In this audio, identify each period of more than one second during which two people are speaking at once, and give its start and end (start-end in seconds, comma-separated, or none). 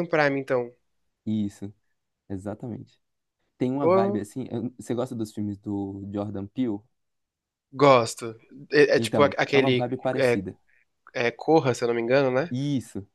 8.9-10.4